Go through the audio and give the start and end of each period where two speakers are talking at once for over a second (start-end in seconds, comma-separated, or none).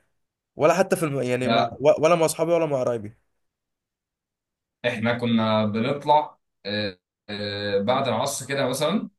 none